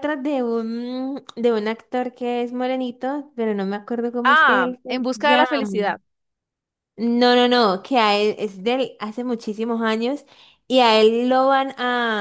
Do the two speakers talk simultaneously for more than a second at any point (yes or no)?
yes